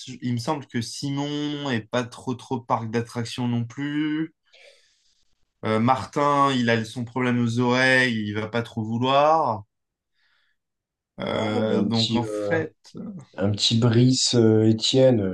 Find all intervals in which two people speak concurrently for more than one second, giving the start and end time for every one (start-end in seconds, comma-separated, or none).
11.3-12.6